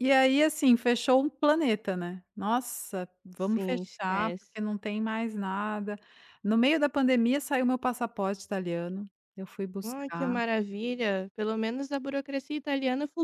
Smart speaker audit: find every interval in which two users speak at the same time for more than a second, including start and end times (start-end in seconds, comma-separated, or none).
3.4-4.6